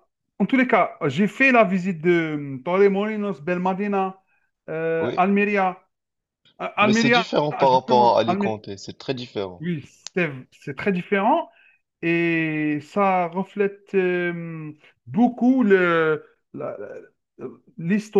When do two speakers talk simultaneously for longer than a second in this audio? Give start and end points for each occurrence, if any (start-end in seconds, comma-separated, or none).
6.8-8.6